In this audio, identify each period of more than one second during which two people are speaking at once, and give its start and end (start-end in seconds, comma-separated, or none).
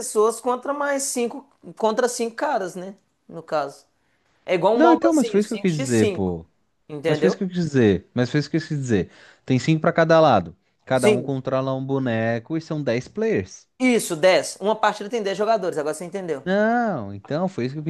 4.7-6.4